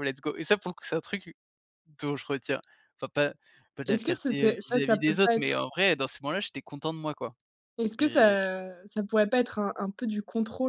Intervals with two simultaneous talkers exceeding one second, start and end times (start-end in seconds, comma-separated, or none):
3.9-5.6